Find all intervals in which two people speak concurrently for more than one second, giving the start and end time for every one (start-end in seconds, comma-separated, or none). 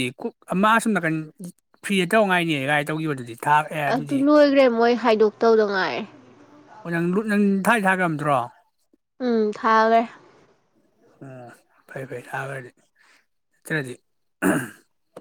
none